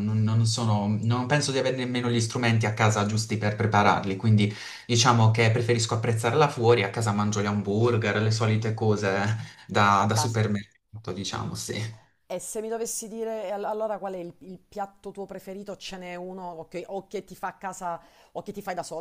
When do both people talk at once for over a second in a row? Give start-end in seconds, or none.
none